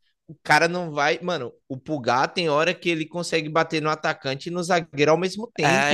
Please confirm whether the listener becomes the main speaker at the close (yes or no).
yes